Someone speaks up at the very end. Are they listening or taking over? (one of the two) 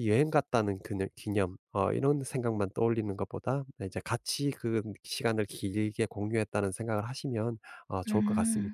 taking over